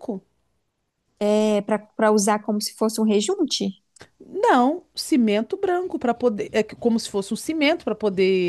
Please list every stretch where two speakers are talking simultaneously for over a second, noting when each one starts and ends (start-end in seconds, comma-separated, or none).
none